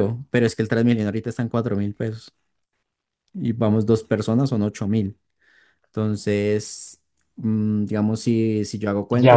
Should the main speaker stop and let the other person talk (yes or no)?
yes